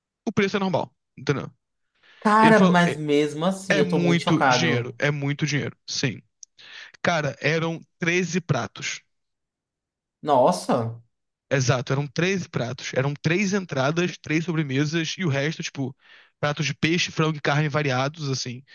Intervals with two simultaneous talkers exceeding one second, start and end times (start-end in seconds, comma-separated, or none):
3.7-5.0